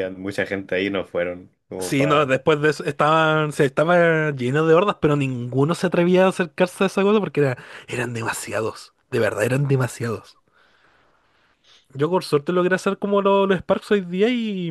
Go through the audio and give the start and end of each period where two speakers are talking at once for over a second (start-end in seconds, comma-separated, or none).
none